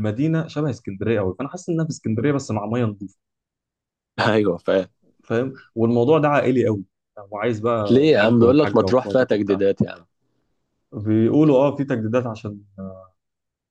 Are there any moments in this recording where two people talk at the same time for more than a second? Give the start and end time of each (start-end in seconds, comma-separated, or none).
7.9-9.6